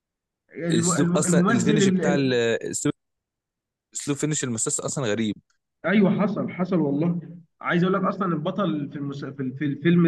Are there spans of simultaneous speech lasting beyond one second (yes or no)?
yes